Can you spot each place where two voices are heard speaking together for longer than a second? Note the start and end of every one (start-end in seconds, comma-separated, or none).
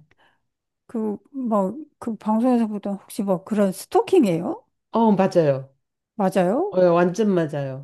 none